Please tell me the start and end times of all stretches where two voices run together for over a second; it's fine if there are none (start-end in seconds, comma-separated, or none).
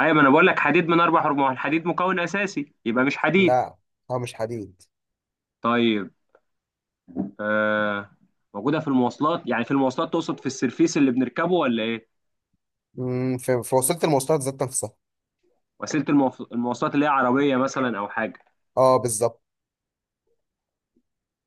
none